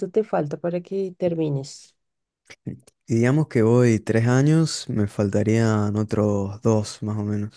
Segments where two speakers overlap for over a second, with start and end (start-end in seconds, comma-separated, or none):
none